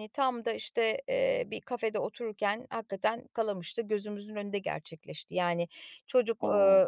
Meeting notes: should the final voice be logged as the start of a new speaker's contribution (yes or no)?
no